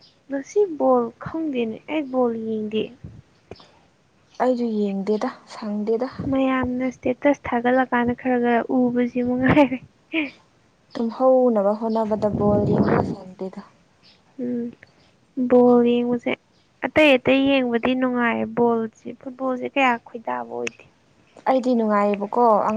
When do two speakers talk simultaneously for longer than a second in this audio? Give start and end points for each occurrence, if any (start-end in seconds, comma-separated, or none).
none